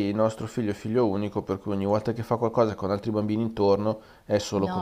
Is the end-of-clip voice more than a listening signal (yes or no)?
yes